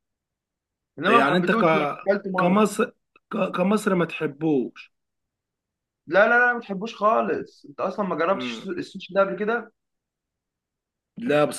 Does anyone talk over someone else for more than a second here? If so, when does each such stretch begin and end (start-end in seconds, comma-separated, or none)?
none